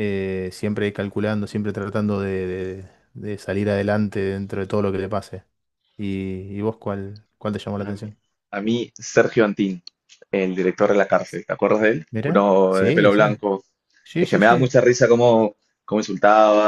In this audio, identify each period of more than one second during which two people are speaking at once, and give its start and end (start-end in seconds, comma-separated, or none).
12.1-13.4